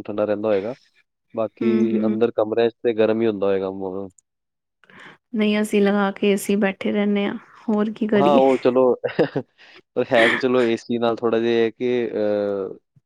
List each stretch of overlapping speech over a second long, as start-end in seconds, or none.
none